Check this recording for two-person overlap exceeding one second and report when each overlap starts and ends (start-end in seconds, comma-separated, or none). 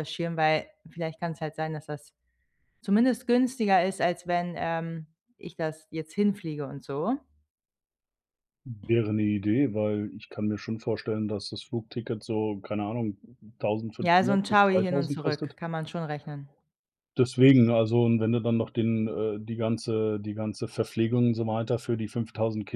14.0-15.6